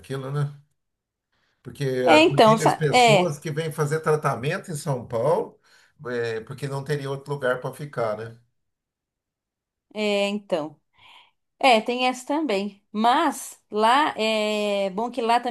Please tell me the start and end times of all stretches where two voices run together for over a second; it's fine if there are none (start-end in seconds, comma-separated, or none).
2.0-3.4